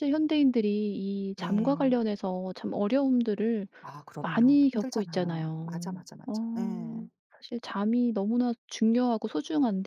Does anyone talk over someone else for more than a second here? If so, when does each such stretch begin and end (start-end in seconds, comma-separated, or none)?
4.2-6.3